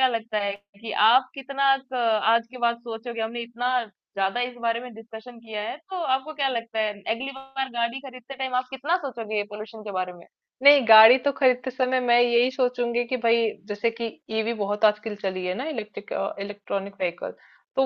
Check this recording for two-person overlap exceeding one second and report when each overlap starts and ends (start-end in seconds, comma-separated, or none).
none